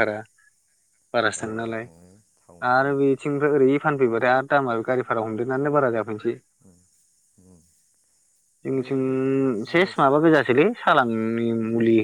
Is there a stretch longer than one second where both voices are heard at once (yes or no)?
no